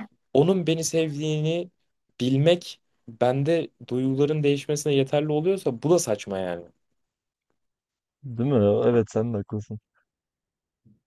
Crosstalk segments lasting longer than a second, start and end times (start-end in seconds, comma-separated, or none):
none